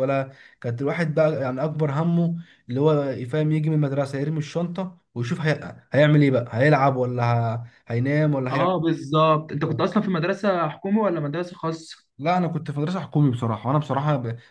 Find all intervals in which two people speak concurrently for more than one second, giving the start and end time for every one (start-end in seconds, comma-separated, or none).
none